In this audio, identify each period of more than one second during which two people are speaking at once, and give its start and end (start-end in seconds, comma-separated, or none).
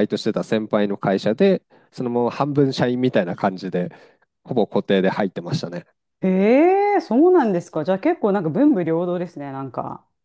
none